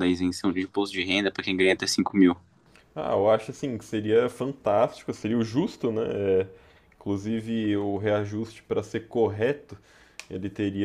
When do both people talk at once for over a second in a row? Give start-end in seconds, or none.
none